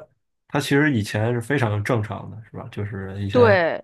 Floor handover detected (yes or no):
no